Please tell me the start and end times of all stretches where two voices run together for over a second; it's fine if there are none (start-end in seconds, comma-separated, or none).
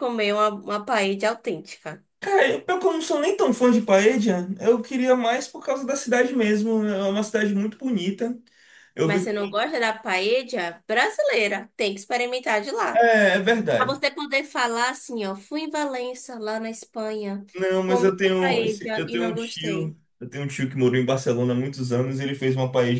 17.9-19.9